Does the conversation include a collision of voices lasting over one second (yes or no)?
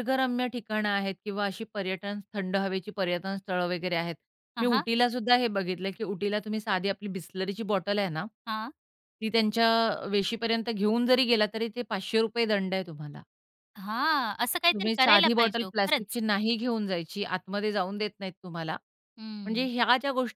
yes